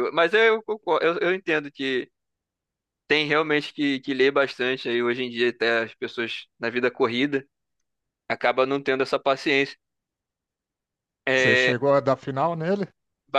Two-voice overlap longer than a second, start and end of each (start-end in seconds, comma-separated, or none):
none